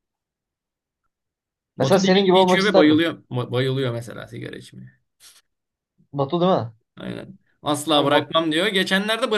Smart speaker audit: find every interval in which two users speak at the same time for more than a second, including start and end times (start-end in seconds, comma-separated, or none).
1.8-3.0